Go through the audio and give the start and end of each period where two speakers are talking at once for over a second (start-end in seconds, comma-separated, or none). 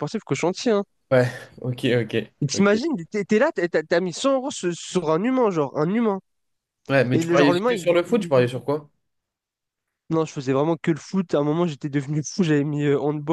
7.1-8.5